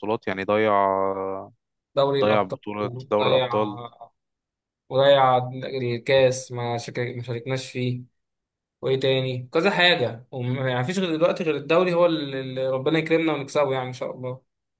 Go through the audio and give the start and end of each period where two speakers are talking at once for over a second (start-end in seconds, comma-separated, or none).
none